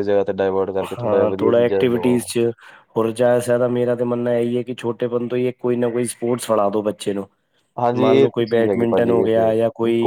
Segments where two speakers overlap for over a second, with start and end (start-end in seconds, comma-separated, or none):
1.0-2.3, 8.0-9.5